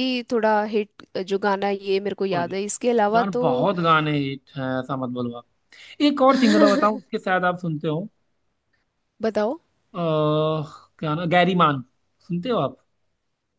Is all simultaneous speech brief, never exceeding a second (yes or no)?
yes